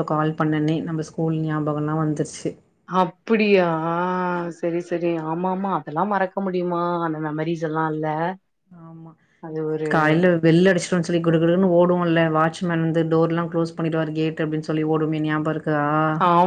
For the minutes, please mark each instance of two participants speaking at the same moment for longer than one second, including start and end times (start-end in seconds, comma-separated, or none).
none